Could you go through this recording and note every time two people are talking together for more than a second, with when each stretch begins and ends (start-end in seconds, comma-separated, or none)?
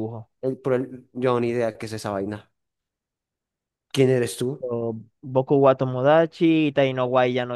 none